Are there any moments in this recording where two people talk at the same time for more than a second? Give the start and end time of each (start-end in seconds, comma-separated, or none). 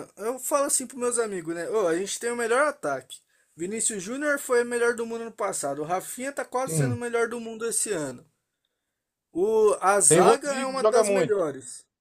10.1-11.4